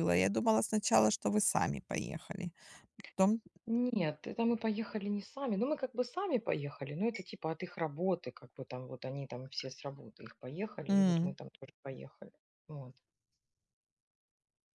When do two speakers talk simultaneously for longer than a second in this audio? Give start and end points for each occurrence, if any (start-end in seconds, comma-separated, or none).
none